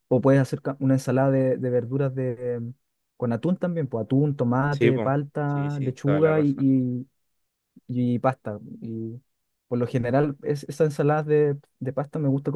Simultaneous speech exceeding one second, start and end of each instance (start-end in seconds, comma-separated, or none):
4.7-6.7